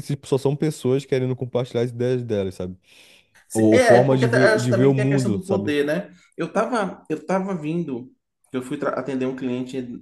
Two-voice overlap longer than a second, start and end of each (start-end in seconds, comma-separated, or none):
3.5-5.7